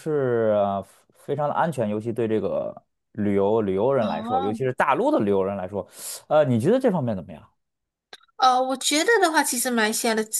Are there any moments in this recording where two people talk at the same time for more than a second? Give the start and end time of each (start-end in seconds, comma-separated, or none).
none